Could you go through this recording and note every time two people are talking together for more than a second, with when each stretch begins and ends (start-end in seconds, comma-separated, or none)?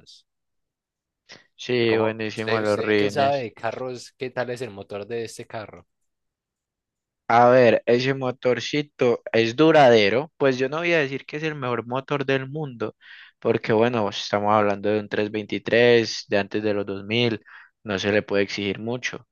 1.9-3.5